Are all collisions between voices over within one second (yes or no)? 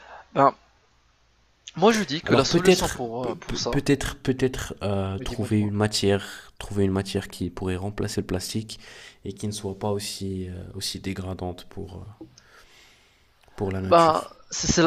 no